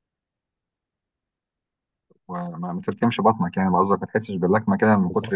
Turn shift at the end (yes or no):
yes